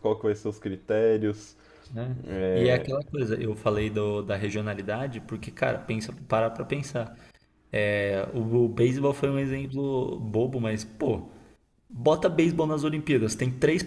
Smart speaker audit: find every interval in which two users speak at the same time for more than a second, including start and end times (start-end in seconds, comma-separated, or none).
none